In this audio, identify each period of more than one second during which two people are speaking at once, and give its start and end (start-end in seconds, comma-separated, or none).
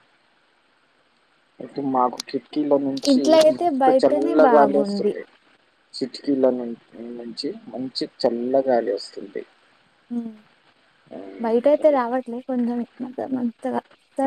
3.1-5.1